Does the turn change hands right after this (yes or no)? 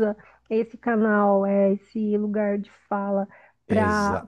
no